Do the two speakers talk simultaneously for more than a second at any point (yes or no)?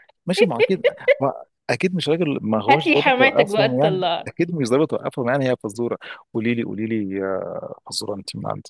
yes